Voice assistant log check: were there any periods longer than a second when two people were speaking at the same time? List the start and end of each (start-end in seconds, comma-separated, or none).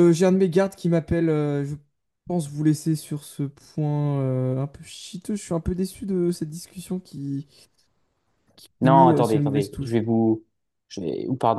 8.8-10.0